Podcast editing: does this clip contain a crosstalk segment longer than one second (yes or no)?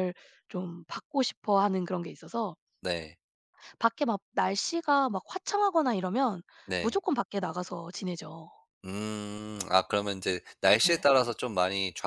no